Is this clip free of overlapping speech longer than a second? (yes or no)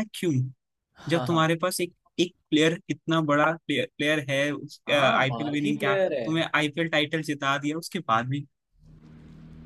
no